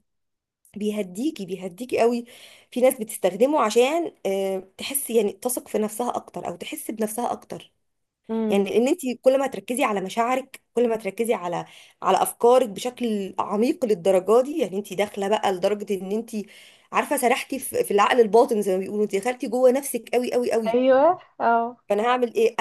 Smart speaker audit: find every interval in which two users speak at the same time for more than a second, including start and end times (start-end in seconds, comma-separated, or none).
none